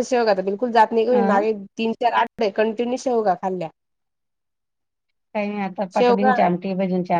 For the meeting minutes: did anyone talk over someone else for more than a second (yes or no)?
no